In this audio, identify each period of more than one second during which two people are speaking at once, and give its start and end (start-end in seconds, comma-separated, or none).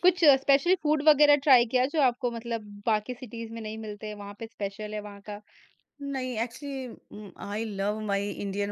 none